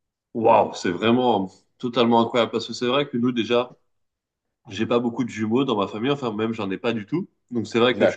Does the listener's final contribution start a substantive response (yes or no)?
no